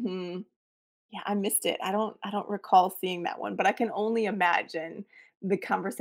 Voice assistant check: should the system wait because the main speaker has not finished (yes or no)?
no